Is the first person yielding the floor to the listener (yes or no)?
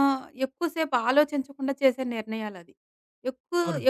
no